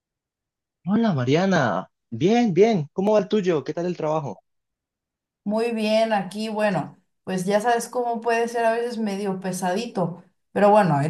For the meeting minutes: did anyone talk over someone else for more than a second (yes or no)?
no